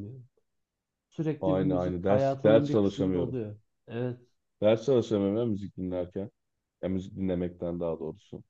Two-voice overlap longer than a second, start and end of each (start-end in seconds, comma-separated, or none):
1.4-3.4